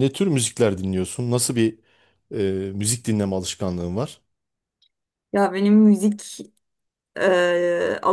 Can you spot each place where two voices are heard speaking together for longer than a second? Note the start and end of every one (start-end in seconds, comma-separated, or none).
none